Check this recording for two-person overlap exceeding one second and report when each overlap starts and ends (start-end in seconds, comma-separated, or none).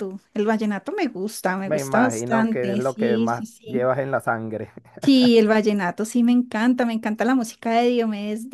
1.6-3.9